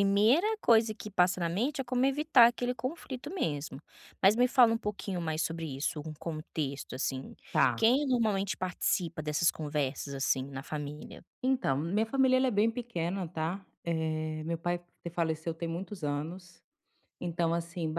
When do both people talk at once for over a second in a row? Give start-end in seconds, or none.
none